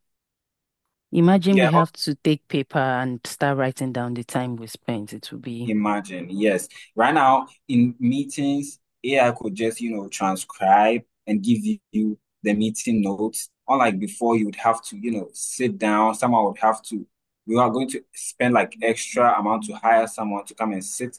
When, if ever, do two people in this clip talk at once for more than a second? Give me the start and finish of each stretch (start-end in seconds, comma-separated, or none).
none